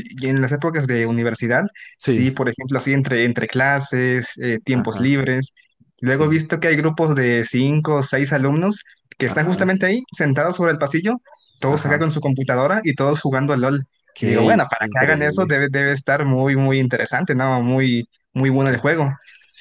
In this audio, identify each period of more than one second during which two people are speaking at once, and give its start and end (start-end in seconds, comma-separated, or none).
14.2-15.6